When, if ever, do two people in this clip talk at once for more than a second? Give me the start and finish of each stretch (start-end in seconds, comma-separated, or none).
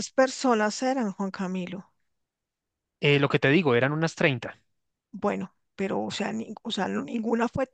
none